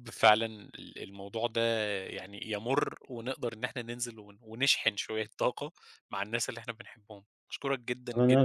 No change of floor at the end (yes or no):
no